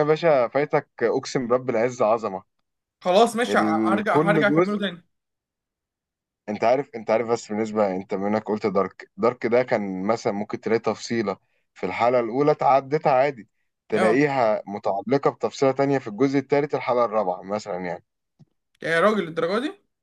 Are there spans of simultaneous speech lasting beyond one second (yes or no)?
yes